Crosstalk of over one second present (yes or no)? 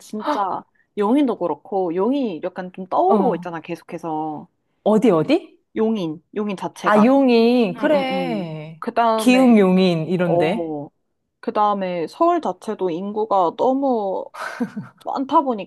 yes